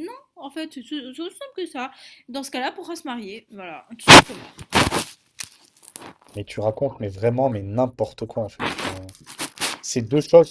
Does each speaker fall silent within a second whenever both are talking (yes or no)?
yes